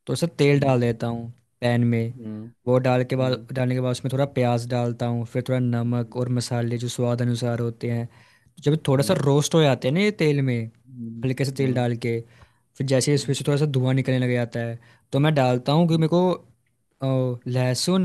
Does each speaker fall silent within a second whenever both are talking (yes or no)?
yes